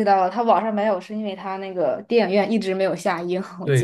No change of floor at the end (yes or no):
no